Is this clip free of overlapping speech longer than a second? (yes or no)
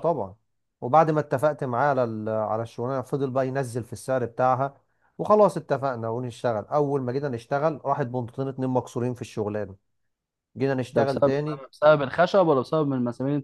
yes